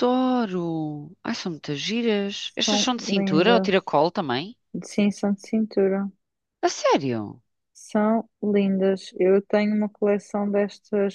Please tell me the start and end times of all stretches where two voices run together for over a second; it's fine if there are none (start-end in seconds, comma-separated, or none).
2.6-4.0